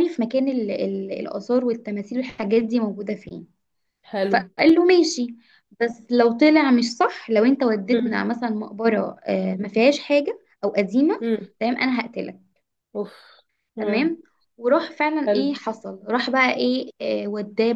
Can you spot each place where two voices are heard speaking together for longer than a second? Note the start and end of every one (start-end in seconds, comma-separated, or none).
none